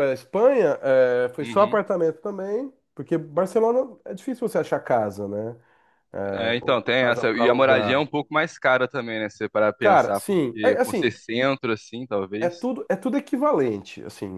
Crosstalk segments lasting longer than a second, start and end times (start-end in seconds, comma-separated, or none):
6.3-8.0, 9.8-11.1